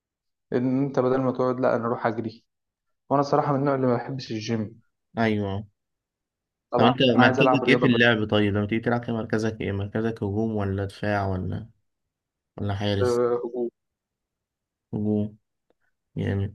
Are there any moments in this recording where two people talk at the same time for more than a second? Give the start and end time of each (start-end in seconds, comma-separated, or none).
6.8-8.1